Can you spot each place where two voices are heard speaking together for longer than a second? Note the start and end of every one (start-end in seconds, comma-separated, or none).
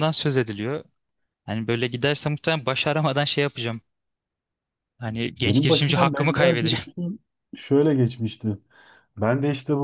5.4-6.8